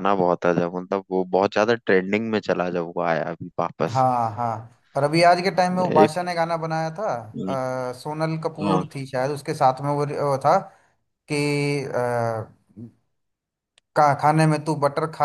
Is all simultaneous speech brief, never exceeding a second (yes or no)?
yes